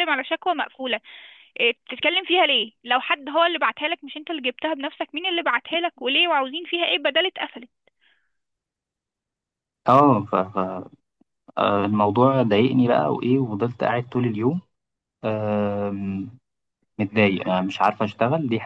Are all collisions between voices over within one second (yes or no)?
yes